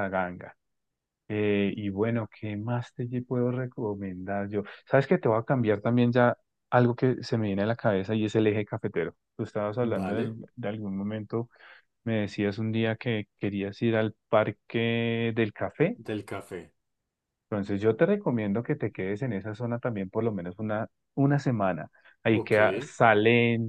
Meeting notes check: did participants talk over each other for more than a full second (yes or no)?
no